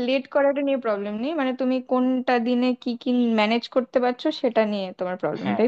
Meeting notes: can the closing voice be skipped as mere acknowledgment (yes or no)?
no